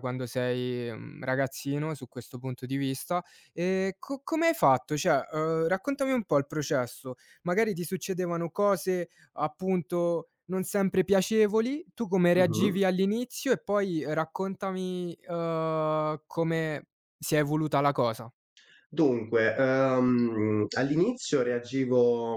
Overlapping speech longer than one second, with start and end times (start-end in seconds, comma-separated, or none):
none